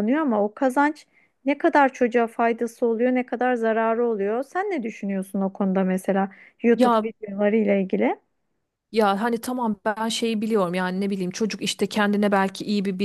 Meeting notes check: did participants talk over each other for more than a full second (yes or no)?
no